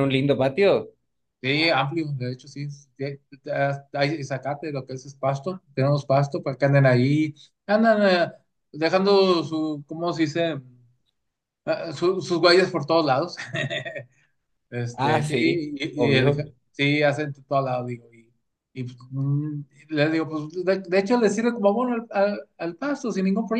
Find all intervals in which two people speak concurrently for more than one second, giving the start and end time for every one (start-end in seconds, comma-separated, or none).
14.9-16.4